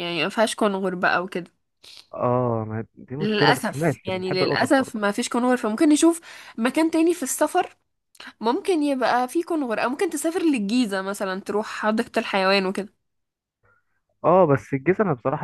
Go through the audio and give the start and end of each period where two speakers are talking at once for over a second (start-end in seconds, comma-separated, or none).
3.2-5.0